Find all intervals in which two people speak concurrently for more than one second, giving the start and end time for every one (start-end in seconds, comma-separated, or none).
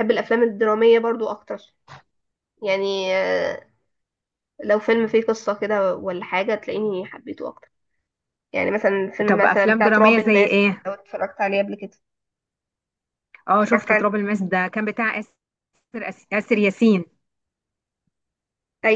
9.3-10.9